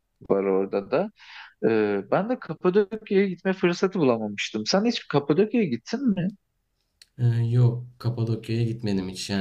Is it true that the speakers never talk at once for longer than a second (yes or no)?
yes